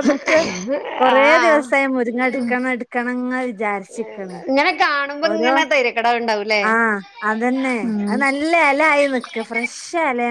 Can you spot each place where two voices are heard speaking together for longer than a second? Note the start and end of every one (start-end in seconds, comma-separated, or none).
none